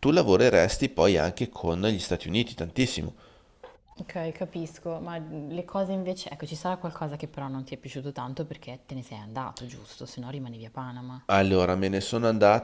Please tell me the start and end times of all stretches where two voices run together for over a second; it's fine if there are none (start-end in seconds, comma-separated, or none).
none